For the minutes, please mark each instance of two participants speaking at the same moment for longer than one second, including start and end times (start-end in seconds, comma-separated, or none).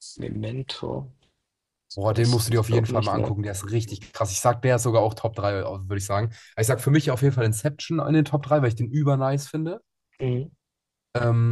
1.9-3.3